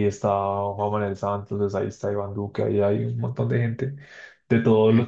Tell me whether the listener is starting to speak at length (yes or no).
no